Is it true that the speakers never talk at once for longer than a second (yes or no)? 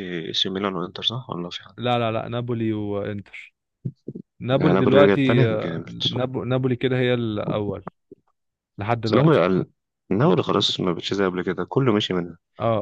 no